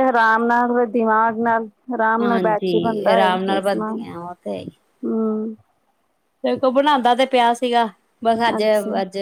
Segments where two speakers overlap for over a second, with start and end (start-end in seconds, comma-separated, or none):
2.2-4.0